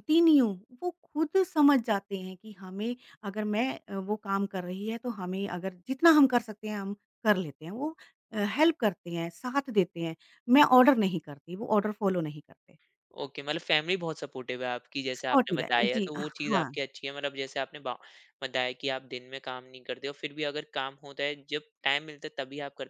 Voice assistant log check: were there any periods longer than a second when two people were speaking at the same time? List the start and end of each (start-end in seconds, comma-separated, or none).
15.2-16.7